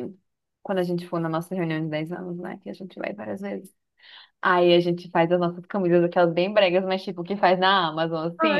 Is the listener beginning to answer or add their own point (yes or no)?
yes